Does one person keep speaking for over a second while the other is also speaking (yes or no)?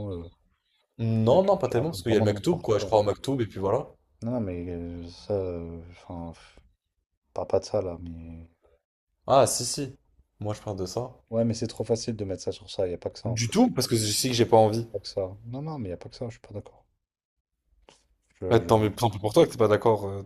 yes